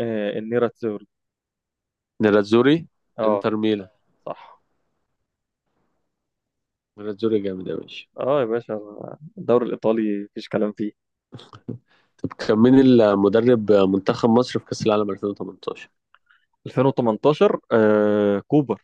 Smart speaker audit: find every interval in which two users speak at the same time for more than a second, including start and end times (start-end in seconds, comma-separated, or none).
none